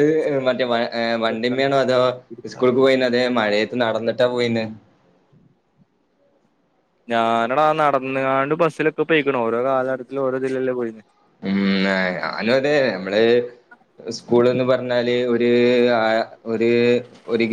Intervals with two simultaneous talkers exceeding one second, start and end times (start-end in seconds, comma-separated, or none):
none